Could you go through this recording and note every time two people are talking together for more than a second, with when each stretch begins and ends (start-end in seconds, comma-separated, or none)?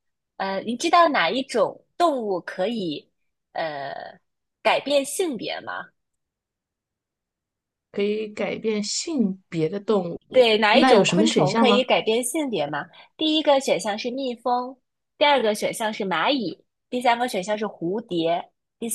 10.3-11.9